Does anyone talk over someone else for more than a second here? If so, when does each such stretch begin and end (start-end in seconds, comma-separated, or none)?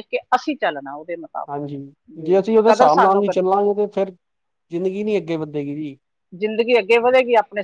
none